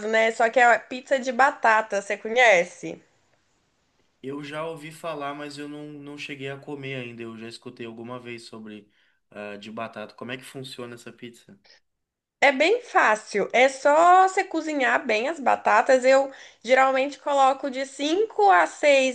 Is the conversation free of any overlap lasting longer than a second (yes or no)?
yes